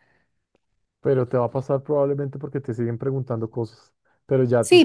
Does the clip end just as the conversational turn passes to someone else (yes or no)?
yes